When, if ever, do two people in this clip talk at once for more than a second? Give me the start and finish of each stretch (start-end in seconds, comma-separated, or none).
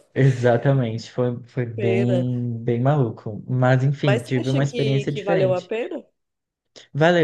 4.0-5.7